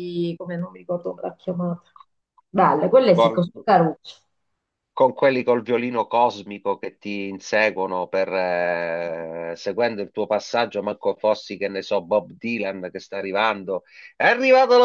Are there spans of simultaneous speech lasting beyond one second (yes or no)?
no